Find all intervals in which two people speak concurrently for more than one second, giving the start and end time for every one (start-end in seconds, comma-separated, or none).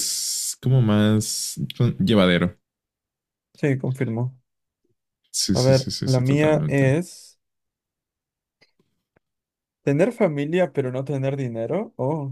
5.5-6.9